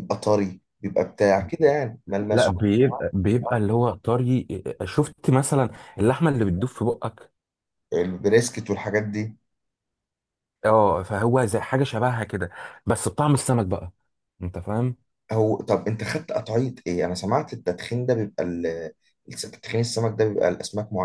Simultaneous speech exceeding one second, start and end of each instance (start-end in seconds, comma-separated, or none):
none